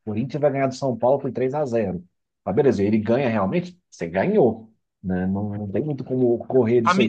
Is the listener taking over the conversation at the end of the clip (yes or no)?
yes